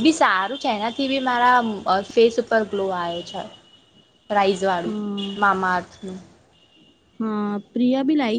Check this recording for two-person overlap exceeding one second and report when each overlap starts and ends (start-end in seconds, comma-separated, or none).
none